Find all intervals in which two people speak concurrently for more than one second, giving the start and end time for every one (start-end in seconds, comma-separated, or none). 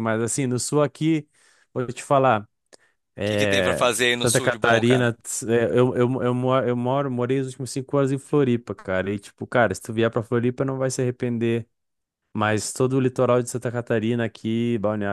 3.2-5.1